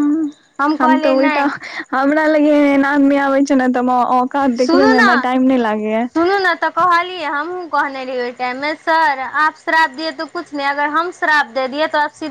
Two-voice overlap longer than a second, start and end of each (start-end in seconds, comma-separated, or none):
none